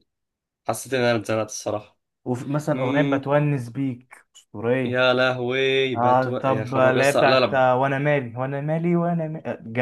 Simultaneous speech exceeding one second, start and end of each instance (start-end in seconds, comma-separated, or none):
6.0-7.6